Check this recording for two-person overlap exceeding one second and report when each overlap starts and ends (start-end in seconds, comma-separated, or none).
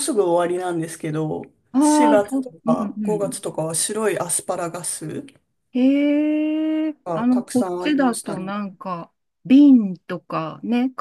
1.8-3.4, 7.0-8.5